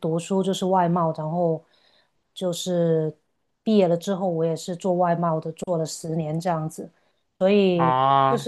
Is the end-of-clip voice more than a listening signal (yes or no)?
no